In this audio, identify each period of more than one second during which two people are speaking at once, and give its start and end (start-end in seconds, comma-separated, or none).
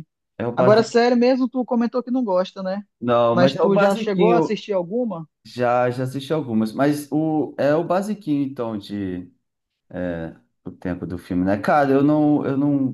3.3-4.6